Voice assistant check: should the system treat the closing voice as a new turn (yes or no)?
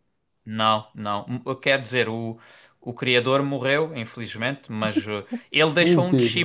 no